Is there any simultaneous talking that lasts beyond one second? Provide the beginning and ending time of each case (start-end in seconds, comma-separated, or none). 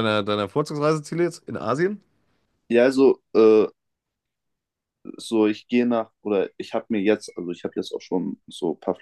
none